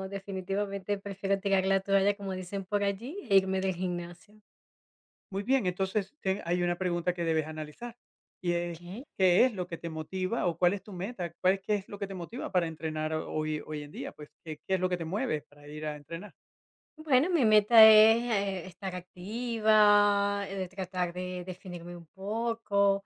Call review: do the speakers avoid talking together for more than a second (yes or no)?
yes